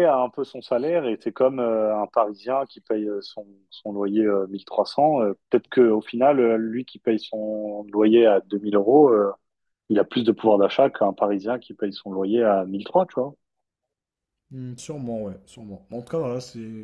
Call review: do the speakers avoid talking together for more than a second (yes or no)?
yes